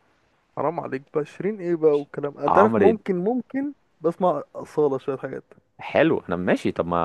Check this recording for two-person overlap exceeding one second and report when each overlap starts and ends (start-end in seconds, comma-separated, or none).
none